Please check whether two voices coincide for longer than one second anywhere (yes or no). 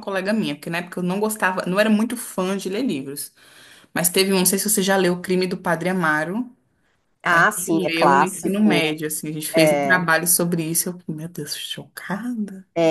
yes